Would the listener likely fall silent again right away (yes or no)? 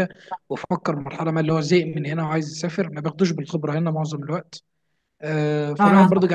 yes